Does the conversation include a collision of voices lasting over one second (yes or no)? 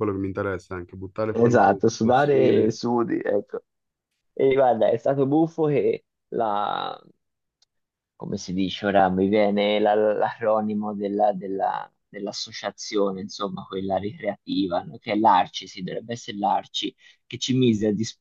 yes